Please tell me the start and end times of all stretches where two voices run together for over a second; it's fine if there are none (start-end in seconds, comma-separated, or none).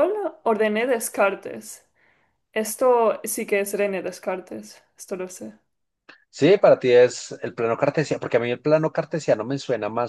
none